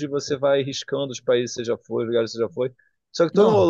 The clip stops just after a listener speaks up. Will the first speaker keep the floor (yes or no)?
yes